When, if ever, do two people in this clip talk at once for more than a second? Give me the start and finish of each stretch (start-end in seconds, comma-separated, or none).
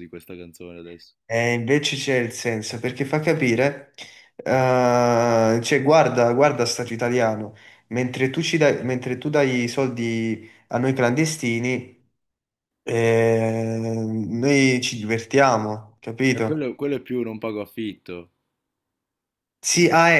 none